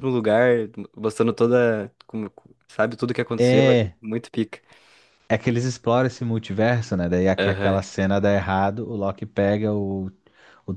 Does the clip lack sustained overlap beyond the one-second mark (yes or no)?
yes